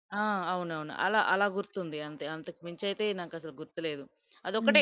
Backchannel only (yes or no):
yes